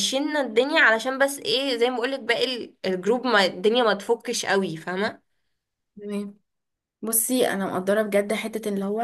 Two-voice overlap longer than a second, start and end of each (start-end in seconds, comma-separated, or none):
none